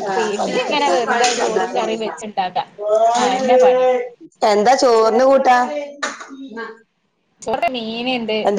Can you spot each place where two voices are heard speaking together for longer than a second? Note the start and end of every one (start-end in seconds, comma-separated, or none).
0.7-2.2